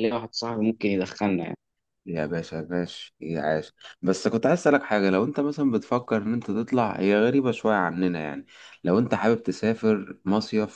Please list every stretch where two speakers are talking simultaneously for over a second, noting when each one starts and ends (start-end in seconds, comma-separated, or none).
none